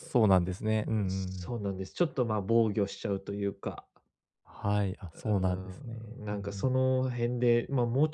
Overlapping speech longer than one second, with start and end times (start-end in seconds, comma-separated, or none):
5.1-6.7